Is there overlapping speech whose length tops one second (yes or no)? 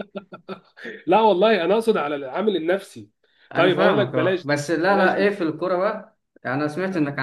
yes